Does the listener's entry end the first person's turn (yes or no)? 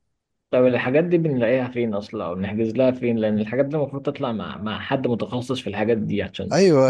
yes